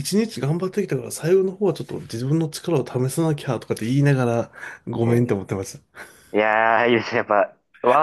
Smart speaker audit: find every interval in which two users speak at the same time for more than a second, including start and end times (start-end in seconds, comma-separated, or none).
none